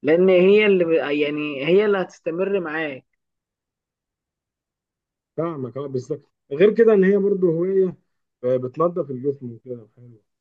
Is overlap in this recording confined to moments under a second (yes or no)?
yes